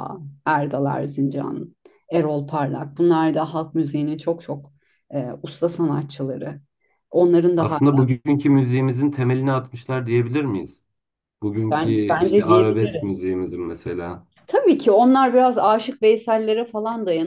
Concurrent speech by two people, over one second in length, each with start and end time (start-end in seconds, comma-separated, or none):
11.7-13.2